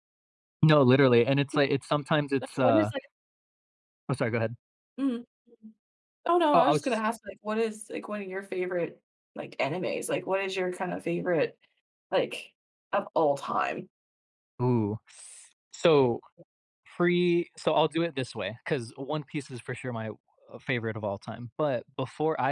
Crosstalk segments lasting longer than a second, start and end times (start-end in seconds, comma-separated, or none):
none